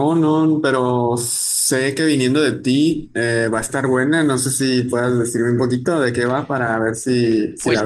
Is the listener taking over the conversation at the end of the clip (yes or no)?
yes